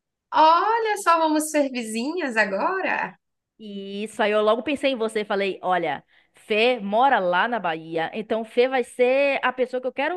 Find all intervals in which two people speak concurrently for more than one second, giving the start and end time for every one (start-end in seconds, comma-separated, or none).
none